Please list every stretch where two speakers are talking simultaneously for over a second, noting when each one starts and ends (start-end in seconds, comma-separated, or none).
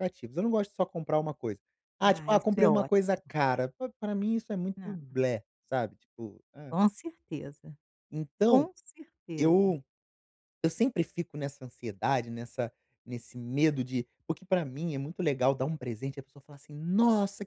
2.0-3.2